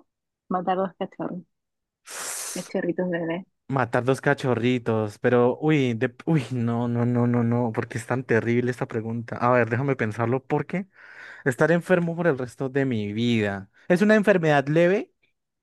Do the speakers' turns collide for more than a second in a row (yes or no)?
no